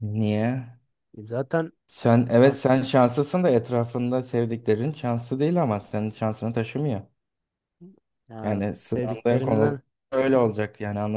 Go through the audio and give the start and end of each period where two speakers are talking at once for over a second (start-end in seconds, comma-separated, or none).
8.4-9.8